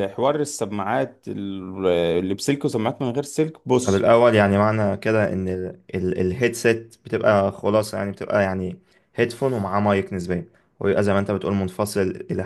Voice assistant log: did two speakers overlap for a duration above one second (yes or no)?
no